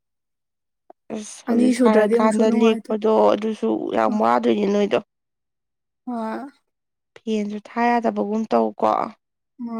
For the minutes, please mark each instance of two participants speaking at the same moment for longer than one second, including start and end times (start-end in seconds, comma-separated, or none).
1.5-2.9